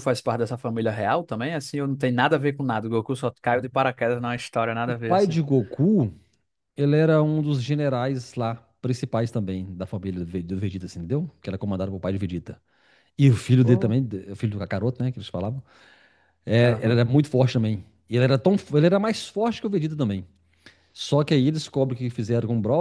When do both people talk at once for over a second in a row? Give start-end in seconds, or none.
none